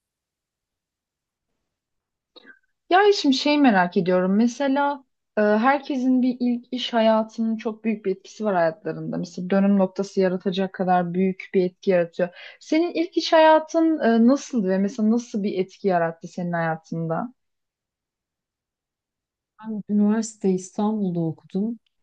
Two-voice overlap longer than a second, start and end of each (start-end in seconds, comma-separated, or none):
none